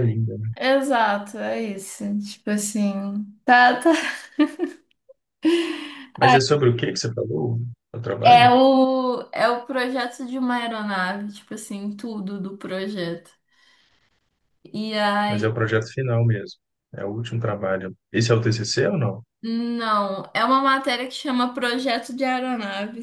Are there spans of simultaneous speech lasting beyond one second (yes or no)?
no